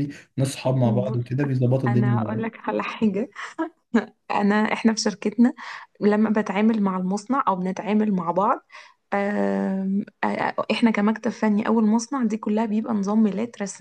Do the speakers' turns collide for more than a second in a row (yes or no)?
no